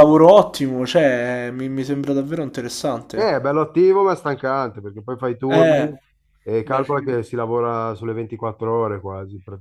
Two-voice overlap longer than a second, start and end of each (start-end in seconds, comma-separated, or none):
none